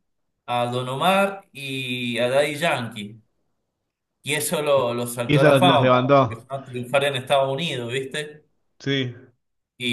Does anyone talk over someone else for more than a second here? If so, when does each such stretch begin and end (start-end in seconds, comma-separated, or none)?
5.3-6.5